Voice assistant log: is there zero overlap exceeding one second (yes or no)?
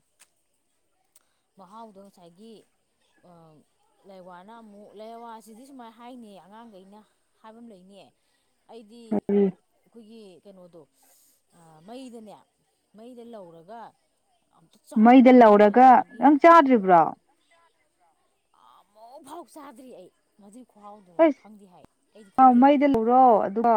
yes